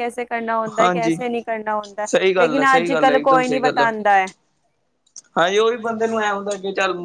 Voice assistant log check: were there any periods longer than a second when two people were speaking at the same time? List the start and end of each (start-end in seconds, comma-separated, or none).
2.1-3.8